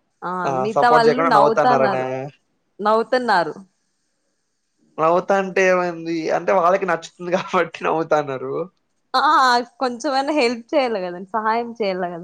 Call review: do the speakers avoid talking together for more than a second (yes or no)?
no